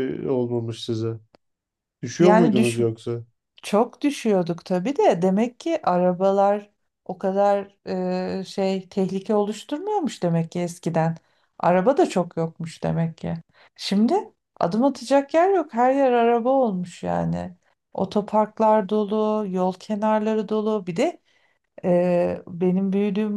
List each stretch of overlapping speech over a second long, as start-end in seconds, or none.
none